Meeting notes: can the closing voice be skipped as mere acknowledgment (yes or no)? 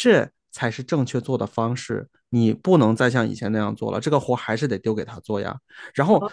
no